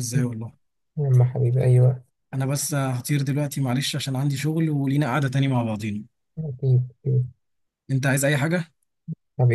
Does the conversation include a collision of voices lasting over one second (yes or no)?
no